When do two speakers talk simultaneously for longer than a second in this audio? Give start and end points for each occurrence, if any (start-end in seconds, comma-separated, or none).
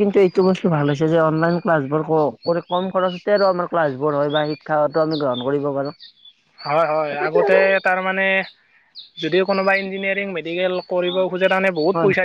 none